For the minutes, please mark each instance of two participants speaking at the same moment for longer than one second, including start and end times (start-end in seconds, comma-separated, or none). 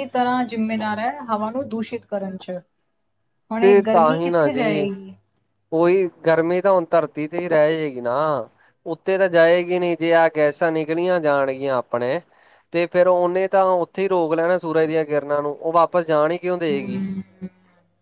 3.6-4.9